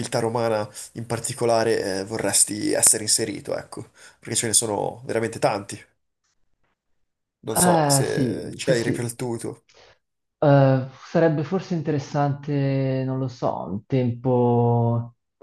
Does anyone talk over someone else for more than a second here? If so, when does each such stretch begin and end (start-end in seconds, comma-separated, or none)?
7.5-9.1